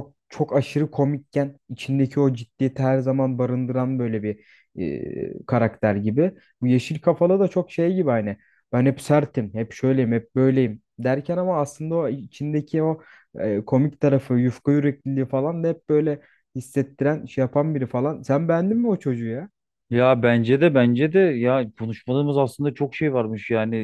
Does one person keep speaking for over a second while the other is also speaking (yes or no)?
no